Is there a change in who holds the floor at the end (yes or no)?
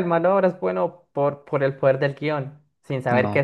no